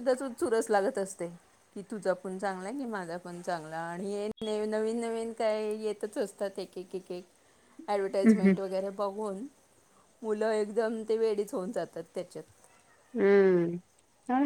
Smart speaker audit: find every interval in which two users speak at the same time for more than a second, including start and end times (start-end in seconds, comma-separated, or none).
none